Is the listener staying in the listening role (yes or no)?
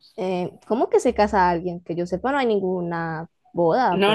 no